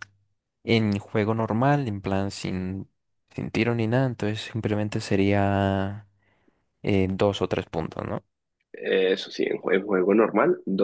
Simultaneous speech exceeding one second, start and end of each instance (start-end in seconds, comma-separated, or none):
none